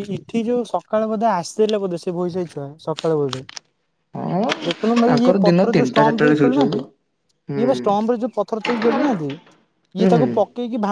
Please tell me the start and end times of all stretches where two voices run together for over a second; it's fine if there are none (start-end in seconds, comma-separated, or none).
5.1-6.8